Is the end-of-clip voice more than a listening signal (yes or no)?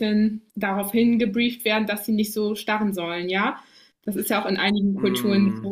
no